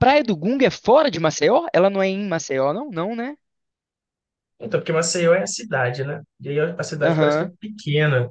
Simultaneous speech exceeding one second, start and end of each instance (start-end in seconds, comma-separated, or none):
none